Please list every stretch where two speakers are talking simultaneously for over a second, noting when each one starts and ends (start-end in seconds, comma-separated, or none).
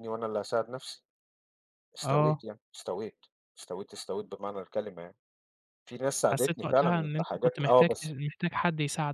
6.3-8.1